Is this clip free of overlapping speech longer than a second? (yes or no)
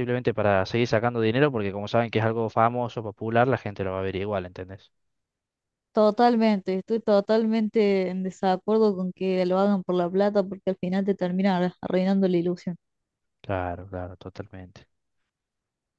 yes